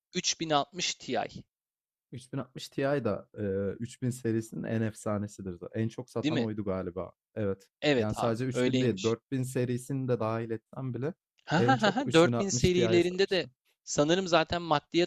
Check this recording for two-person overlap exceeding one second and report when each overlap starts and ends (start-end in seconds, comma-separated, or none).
7.8-9.2, 11.6-13.5